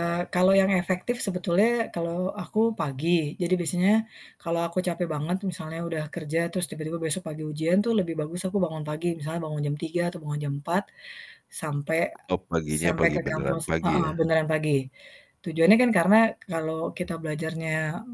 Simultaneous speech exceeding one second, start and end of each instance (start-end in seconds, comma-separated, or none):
12.7-14.2